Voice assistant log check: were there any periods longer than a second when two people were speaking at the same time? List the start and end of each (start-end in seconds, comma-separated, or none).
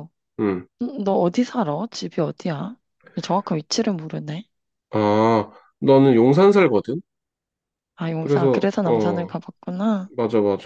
8.1-9.3